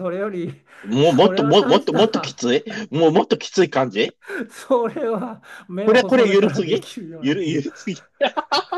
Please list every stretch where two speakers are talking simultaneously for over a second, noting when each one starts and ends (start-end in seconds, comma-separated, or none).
1.0-2.4, 5.8-7.6